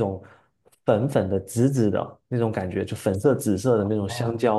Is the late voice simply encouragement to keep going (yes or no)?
yes